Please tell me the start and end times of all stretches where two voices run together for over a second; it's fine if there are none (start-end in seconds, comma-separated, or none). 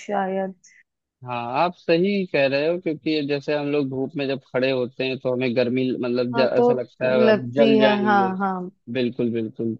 6.3-8.3